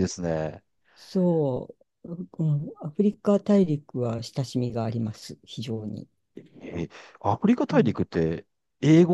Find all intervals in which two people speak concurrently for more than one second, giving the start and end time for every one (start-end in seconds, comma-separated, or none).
none